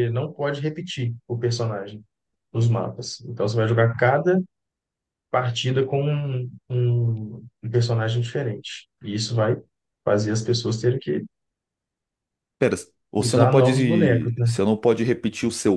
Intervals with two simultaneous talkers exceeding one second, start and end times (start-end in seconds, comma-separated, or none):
13.2-14.5